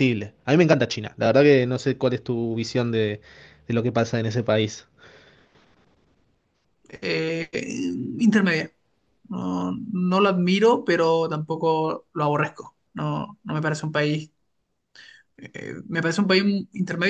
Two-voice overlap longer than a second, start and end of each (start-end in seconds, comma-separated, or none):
none